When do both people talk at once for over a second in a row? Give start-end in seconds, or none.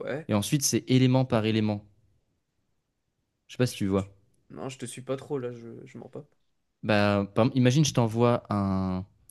none